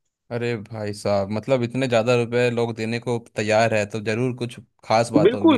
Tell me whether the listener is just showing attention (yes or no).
no